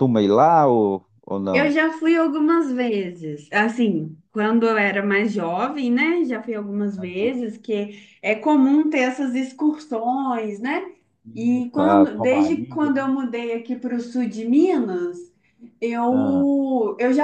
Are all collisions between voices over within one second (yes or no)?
no